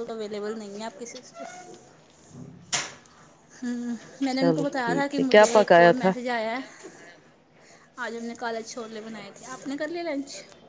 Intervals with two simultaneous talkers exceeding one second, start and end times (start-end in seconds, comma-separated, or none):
4.3-6.1